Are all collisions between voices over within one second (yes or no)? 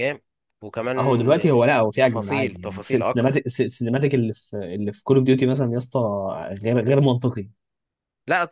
no